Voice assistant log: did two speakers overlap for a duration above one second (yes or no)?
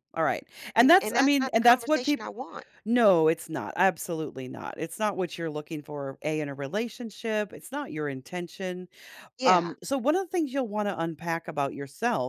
yes